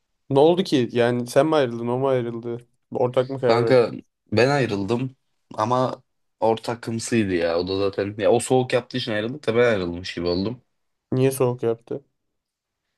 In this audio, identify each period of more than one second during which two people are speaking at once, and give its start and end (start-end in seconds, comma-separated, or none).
none